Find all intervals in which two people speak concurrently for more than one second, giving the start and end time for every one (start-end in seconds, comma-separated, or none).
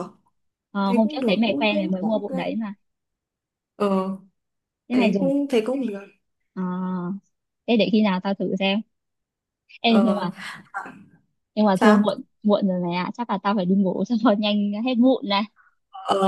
0.8-2.3